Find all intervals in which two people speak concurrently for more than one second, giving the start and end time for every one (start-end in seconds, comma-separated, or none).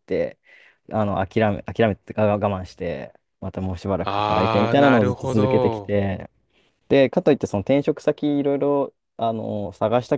4.0-5.9